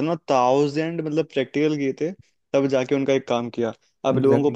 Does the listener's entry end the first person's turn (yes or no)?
no